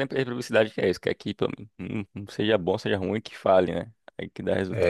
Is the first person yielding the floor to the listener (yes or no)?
yes